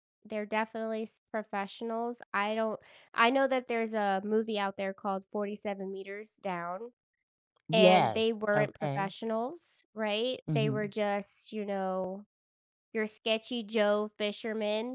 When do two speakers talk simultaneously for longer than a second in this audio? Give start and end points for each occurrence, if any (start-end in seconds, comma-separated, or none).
7.7-9.1